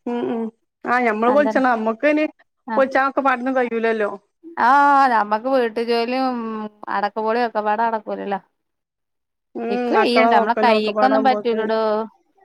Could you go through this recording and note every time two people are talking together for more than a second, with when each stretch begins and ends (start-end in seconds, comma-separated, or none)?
9.8-11.7